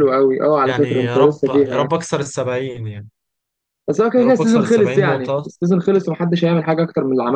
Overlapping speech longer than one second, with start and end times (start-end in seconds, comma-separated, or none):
0.6-1.9, 4.2-5.5